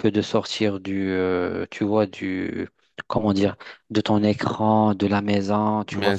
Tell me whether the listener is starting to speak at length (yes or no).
no